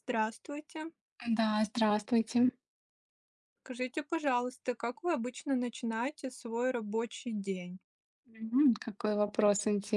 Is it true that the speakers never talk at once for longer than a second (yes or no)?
yes